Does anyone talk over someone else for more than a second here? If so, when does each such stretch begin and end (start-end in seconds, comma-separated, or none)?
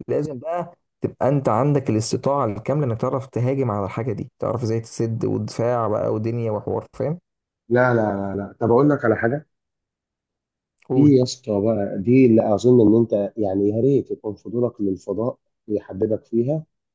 none